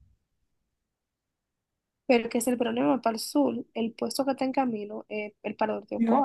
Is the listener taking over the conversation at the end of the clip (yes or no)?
yes